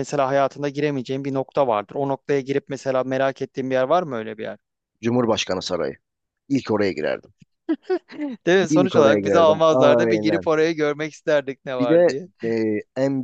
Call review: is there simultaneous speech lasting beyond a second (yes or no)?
yes